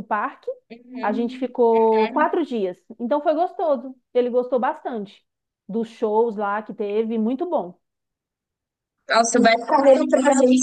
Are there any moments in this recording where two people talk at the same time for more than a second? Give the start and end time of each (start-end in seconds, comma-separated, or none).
1.0-2.3